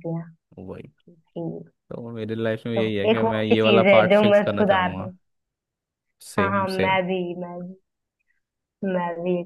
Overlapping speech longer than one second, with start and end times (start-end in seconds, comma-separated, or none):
2.7-5.1